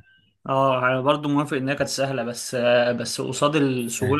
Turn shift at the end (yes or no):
no